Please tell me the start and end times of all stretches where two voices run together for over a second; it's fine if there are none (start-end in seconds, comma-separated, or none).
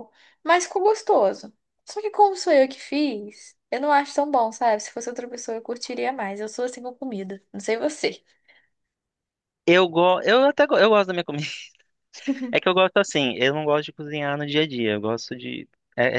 none